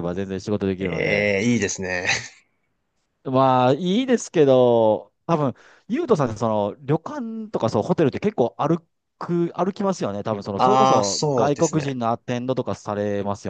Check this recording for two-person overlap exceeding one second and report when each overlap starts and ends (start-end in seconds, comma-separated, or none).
10.6-12.0